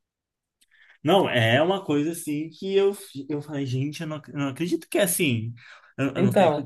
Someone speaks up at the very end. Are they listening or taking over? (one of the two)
listening